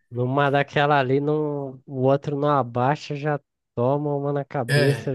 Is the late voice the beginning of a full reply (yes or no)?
yes